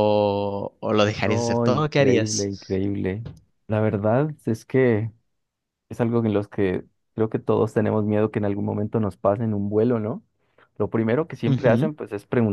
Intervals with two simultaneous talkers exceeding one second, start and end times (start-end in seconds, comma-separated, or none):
1.2-2.8